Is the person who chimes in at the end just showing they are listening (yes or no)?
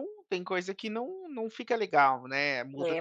no